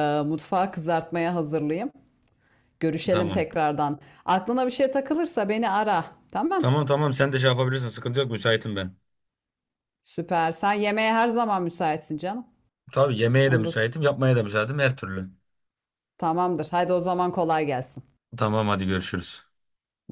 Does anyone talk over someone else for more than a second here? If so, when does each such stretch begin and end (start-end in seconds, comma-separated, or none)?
none